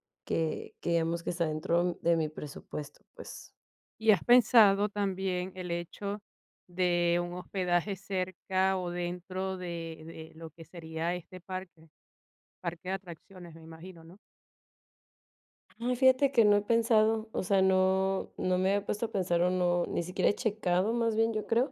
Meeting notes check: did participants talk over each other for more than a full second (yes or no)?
no